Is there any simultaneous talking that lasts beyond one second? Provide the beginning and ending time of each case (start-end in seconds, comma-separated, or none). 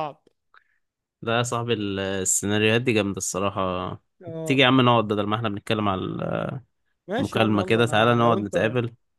7.2-8.5